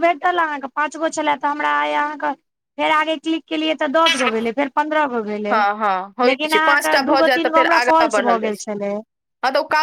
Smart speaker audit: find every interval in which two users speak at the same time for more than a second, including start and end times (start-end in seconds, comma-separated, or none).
6.3-8.6